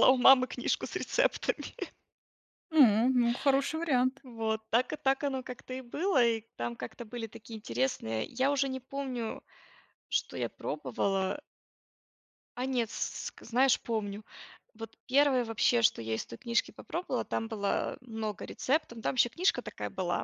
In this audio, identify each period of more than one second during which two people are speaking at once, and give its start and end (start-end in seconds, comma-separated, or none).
none